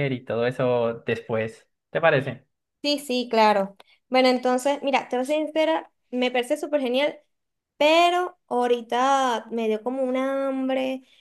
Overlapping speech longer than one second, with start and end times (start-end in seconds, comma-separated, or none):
none